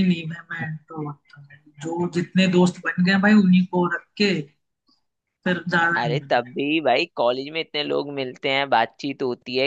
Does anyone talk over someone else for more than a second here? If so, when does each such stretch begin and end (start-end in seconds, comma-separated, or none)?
none